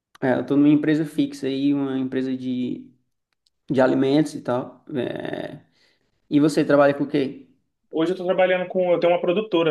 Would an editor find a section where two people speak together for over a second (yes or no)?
no